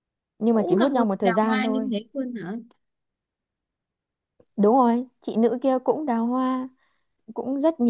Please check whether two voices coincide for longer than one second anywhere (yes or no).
yes